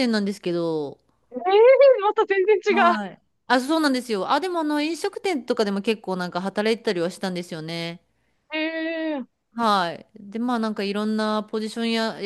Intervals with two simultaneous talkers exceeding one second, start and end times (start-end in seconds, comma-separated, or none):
none